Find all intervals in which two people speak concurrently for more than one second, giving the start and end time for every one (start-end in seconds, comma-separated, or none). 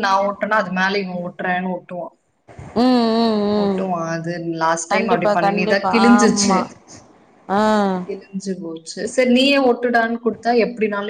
4.9-6.6